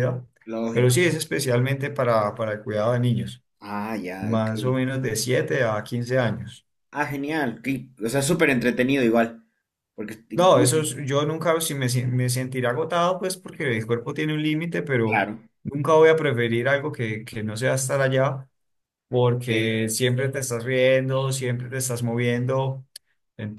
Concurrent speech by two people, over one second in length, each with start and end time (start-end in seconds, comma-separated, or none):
none